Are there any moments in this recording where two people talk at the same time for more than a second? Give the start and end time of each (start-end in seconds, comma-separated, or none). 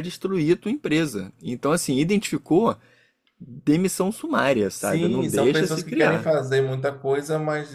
4.8-6.3